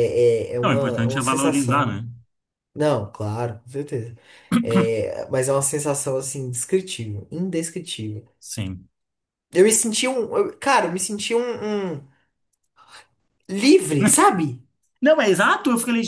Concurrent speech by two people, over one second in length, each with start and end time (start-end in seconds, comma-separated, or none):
0.6-2.0